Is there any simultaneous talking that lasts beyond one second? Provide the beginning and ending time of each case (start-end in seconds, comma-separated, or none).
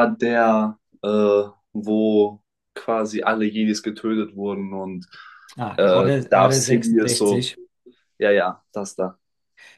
5.8-7.5